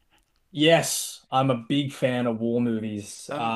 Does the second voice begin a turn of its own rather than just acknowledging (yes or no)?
no